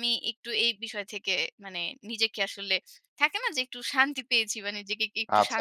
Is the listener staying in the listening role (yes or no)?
no